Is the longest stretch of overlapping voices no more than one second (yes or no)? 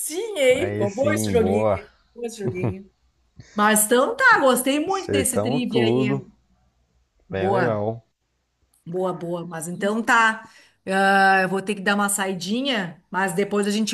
no